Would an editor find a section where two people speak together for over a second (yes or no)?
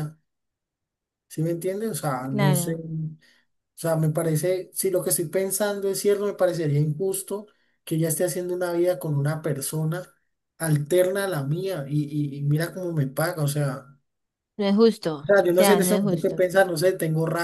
yes